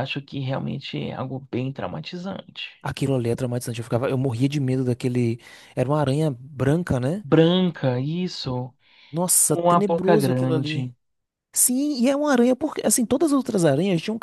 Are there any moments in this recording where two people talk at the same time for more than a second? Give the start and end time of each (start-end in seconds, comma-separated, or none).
9.4-10.9